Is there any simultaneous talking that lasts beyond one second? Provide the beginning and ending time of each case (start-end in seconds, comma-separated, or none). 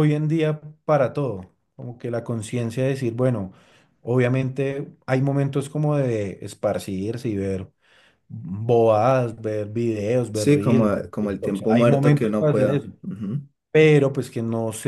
10.3-12.9